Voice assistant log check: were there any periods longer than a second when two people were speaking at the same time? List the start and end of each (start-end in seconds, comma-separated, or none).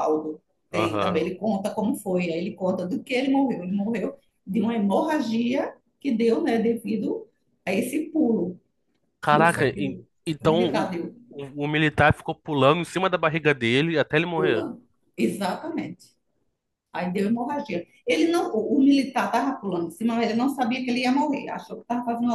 9.2-10.9